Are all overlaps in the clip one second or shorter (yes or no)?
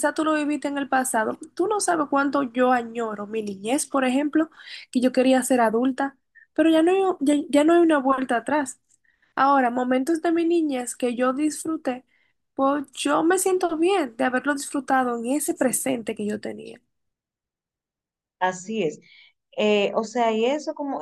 yes